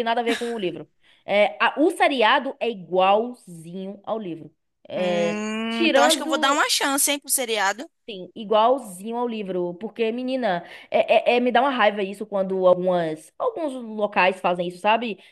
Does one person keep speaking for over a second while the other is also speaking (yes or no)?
yes